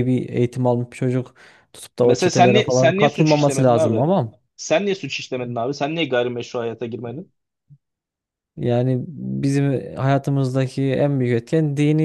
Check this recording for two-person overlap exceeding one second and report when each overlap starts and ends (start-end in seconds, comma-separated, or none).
2.0-4.0